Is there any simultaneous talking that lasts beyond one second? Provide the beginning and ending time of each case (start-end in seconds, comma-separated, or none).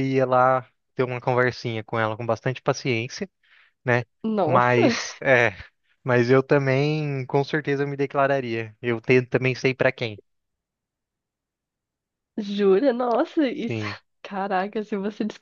none